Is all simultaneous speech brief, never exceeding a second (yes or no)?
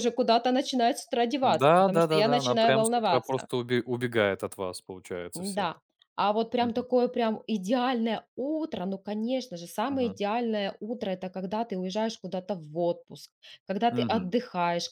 no